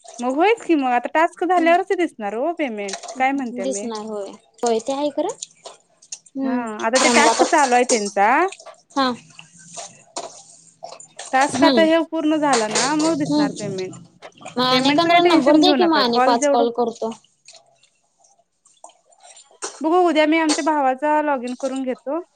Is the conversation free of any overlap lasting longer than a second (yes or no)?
no